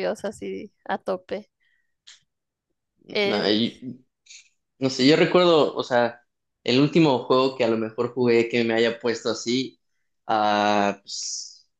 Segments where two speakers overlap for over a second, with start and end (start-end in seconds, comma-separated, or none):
none